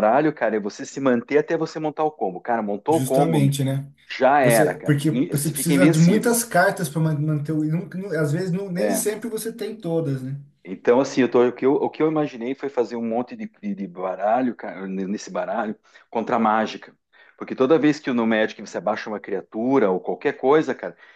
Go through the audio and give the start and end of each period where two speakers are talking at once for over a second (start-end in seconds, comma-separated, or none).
4.4-6.3